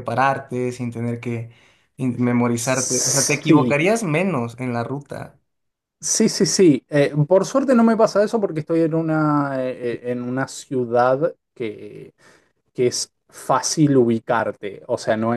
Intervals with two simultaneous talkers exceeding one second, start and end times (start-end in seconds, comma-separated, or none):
2.6-3.8